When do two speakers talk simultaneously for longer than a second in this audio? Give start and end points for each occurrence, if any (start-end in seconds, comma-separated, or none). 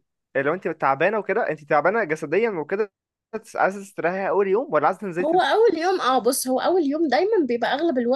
none